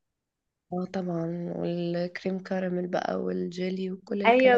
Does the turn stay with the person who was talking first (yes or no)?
no